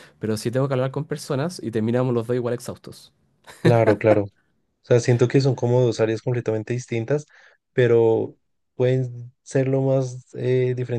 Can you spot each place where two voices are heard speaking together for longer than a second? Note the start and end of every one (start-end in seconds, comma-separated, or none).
none